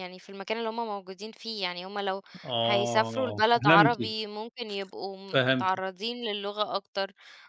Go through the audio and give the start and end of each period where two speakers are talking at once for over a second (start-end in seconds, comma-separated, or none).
2.6-4.2